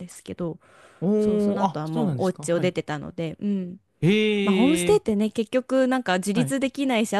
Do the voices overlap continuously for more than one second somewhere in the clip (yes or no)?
yes